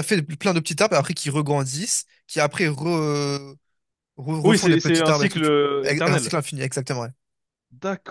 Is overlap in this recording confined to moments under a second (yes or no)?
no